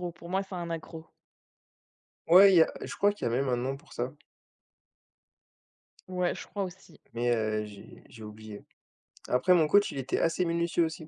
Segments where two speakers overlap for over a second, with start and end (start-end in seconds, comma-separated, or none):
none